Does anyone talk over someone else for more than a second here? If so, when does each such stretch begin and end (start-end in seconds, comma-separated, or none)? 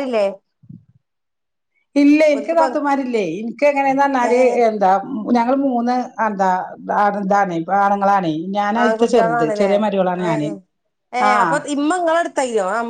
none